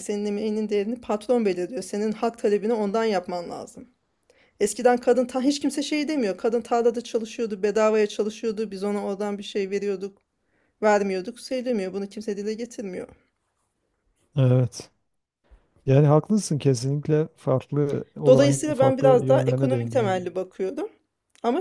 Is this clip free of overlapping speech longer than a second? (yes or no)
no